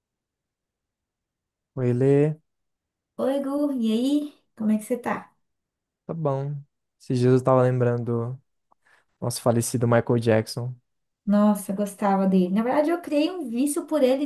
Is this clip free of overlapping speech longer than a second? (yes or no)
yes